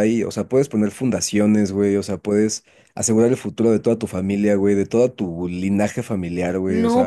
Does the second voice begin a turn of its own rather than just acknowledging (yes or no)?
yes